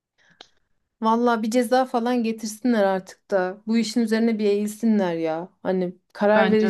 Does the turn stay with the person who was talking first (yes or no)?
yes